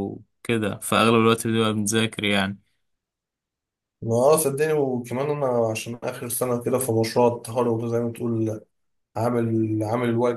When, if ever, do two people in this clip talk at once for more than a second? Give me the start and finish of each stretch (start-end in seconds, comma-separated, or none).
none